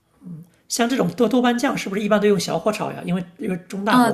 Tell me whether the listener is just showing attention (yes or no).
no